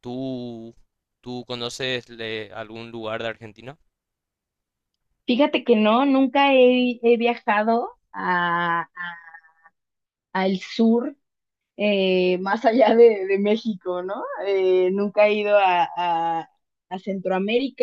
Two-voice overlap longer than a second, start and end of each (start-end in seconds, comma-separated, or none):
none